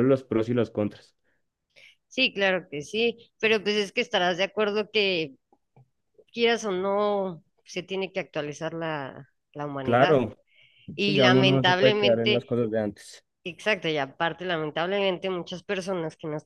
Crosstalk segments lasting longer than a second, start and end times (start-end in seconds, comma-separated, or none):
11.0-12.5